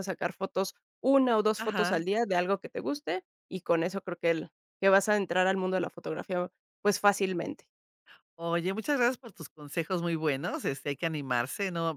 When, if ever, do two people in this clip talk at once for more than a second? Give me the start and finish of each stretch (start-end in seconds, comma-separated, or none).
none